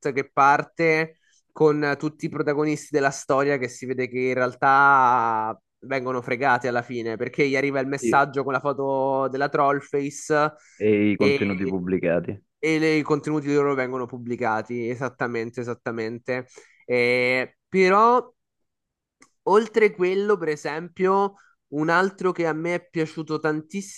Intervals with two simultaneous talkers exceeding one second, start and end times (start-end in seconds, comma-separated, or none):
none